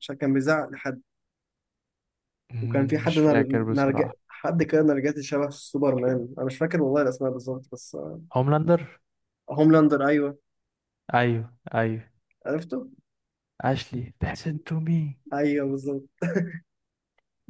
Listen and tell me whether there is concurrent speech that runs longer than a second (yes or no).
yes